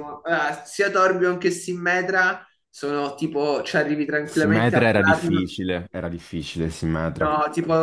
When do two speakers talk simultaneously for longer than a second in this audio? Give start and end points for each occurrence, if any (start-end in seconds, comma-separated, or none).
4.2-5.6